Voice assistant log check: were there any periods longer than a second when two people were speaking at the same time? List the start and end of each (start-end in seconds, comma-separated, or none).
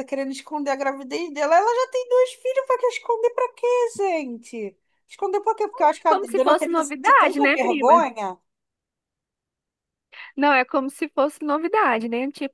6.1-8.1